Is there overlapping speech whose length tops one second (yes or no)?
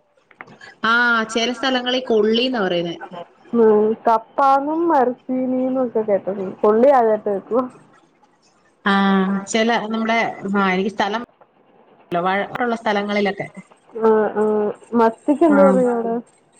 no